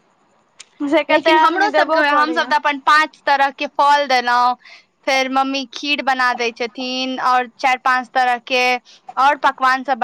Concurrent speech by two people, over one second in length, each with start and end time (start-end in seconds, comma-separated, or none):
1.1-2.5